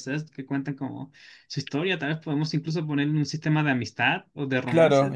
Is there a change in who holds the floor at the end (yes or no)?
yes